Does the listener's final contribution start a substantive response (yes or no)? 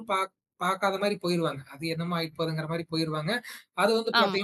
no